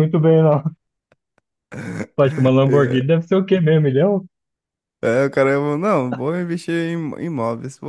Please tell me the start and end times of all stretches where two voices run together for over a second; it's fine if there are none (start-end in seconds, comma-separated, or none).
none